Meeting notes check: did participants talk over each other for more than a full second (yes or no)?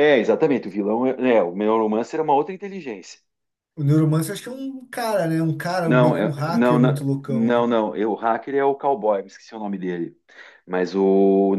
yes